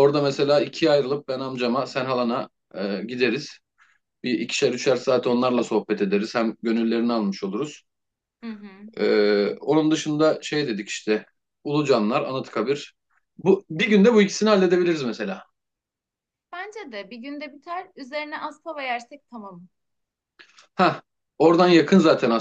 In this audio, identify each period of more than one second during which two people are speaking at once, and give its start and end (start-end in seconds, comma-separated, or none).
none